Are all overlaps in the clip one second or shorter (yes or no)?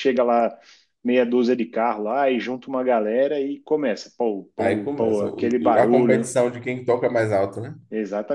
no